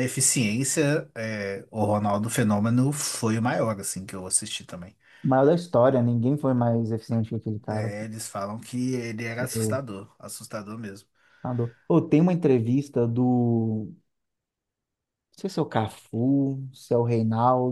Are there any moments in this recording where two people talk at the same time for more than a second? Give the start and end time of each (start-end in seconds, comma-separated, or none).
none